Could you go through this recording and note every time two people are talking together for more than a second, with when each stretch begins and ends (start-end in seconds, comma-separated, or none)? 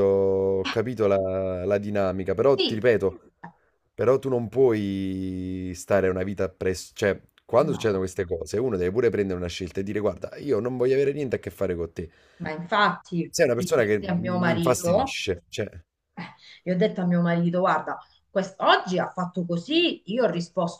13.3-15.2